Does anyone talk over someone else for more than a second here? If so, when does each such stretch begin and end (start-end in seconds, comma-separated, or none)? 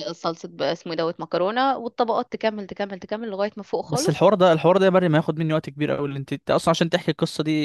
none